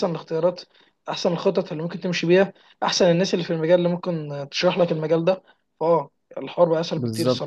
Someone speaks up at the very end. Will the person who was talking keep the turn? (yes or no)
no